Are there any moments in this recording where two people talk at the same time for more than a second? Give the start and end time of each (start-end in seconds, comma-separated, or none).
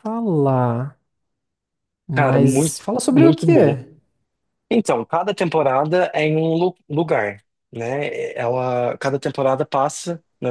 2.1-3.8